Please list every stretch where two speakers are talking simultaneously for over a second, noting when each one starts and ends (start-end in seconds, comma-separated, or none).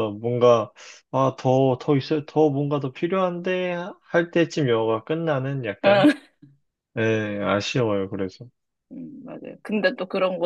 none